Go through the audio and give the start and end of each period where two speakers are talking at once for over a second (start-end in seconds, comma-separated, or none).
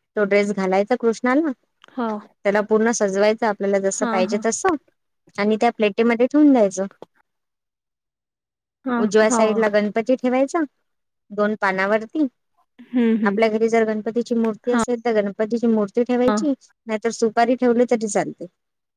none